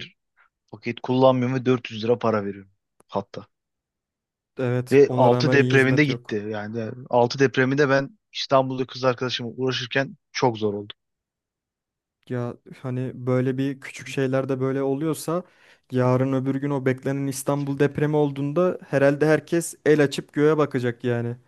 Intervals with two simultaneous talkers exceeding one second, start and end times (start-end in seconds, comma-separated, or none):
4.9-6.4